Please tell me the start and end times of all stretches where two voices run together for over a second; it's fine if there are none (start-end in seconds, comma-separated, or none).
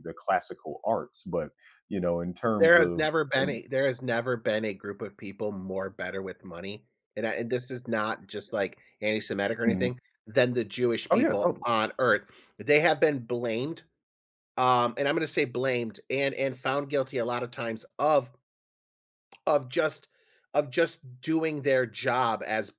none